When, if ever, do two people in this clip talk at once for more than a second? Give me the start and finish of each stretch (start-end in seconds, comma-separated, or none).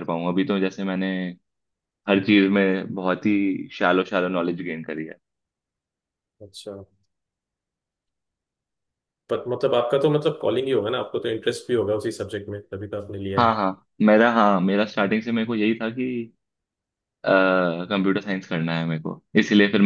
none